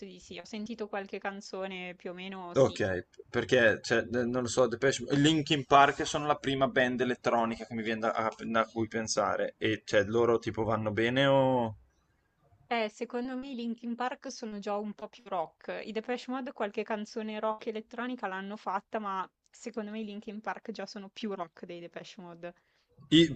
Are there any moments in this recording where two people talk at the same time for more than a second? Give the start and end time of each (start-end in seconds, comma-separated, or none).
none